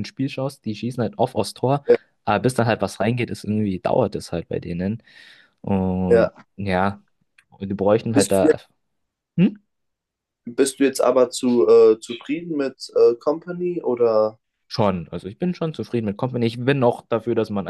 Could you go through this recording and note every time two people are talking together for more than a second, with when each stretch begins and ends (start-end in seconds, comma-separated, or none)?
none